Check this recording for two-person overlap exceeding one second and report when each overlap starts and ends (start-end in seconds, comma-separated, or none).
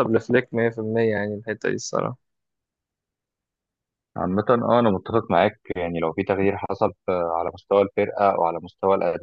none